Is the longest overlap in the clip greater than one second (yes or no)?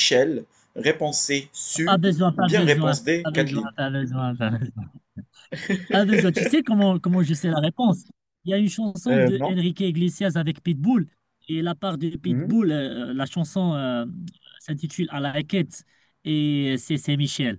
yes